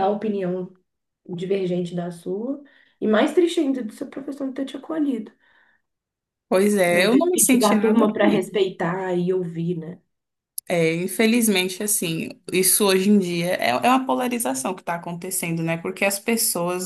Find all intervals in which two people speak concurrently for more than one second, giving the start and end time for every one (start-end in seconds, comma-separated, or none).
6.9-8.4